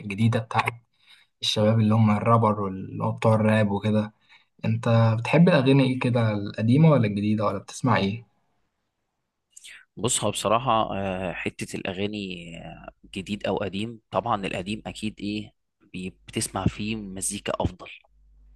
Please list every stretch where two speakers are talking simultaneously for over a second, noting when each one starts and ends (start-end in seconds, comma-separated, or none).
none